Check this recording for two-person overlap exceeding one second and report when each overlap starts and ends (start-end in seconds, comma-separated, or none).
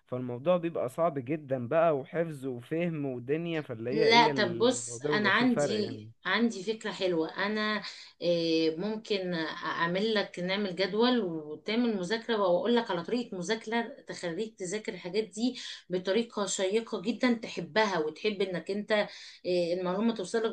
3.9-6.1